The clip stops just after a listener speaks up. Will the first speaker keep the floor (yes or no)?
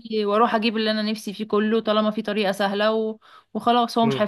no